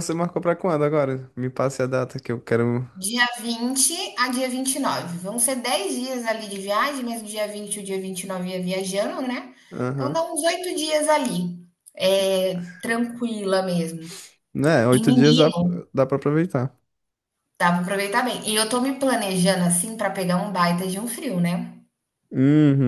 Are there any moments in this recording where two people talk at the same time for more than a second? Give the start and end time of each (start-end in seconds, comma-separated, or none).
none